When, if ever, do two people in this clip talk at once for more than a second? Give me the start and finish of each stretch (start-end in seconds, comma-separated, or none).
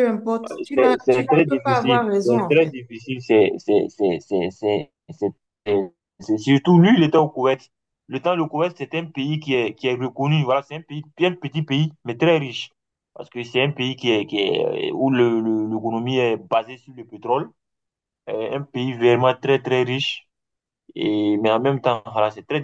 0.7-2.8